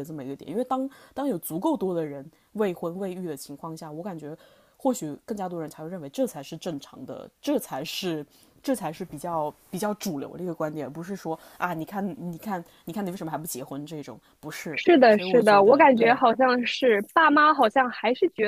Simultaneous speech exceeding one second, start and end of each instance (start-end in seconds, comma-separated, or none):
14.8-16.2